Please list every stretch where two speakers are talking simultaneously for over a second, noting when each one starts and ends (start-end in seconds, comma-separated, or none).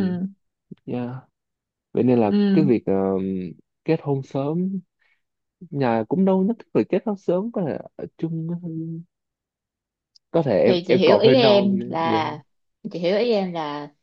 10.7-12.2